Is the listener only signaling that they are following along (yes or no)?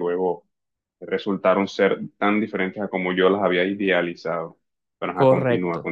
no